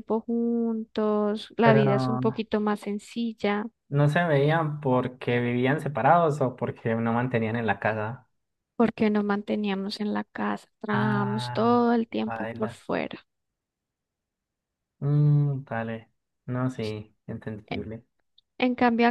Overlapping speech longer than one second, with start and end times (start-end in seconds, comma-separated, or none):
10.9-12.8